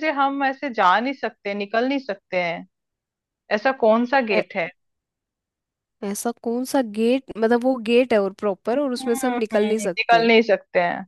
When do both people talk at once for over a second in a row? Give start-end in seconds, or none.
8.8-10.3